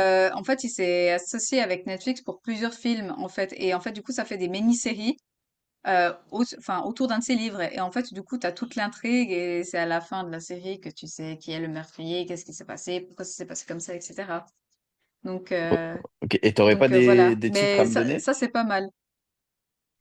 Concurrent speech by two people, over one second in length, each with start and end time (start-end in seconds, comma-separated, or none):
16.6-18.3